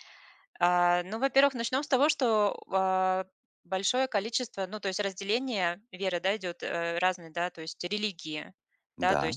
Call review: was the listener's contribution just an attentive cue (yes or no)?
yes